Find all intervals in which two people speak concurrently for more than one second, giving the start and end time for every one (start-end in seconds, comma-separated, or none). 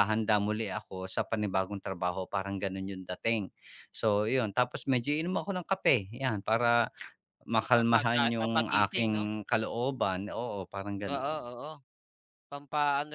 7.6-9.2